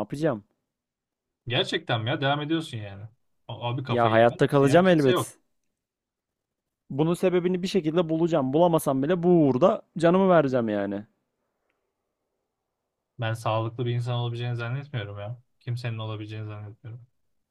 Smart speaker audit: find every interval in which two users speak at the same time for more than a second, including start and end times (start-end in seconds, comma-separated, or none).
3.9-5.3